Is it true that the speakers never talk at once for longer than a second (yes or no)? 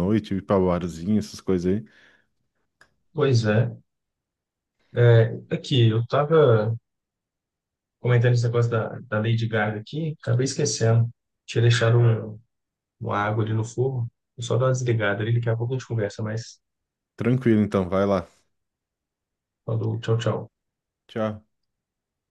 yes